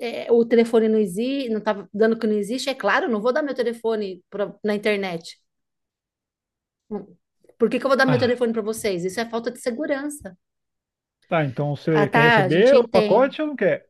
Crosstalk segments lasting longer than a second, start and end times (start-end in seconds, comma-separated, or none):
11.9-13.3